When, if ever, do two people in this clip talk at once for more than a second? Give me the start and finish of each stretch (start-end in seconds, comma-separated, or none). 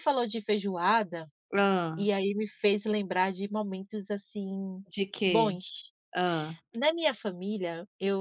none